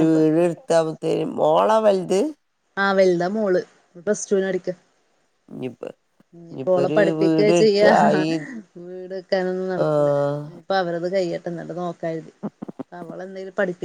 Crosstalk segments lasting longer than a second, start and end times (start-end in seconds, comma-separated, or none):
none